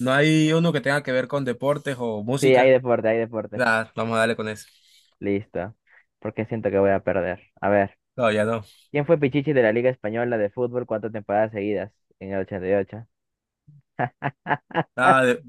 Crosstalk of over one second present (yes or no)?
no